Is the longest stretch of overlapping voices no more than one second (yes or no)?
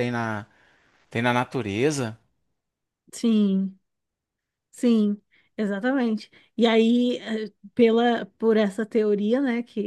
yes